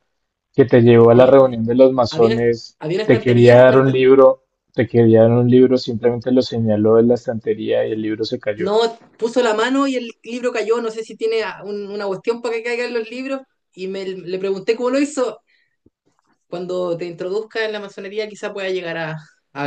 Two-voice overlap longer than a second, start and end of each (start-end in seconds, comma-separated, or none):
2.1-4.0